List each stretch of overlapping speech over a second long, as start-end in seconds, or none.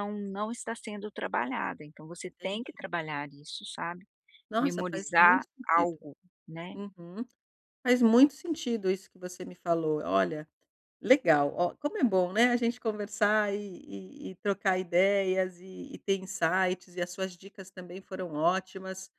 4.6-6.0